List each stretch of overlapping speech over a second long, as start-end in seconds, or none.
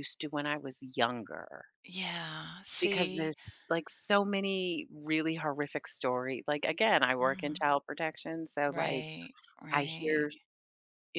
none